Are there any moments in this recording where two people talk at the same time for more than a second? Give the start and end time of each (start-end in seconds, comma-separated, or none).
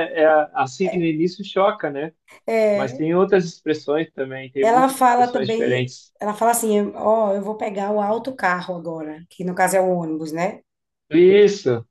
4.6-6.1